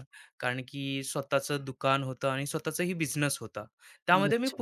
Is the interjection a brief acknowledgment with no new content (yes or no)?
yes